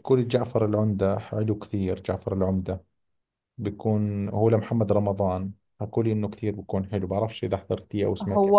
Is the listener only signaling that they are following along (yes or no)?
no